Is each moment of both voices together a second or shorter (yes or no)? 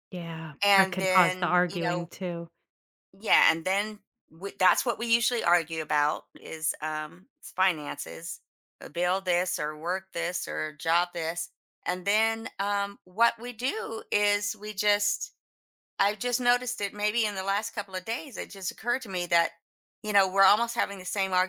no